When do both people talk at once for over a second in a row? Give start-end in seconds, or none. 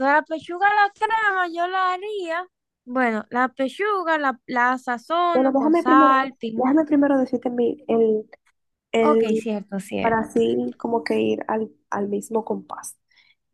5.3-6.8